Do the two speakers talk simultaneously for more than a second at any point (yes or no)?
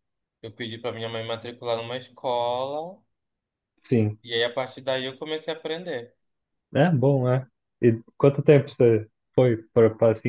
no